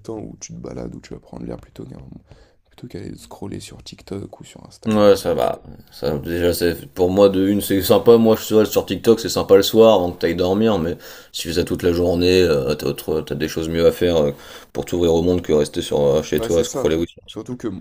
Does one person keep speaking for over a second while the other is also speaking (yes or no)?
no